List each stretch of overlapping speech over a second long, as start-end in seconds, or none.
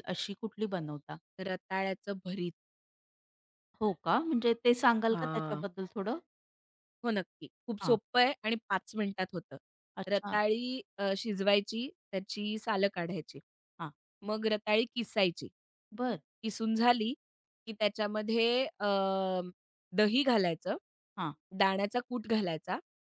none